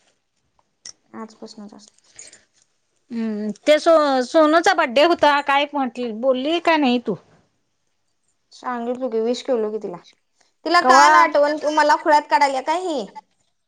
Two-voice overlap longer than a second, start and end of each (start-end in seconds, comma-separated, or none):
none